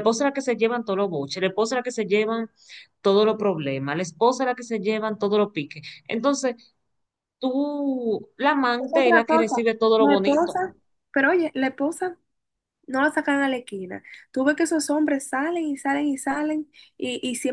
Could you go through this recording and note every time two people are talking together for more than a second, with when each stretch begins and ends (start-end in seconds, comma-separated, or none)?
8.8-10.6